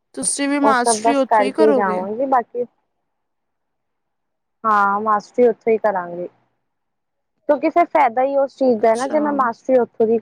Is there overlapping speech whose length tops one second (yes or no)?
yes